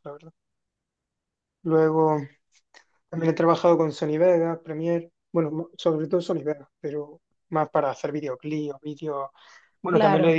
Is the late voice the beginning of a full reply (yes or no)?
no